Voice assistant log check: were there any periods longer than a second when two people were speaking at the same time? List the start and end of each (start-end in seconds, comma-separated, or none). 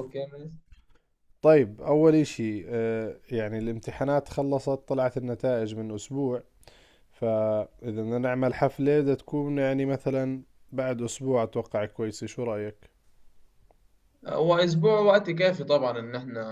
none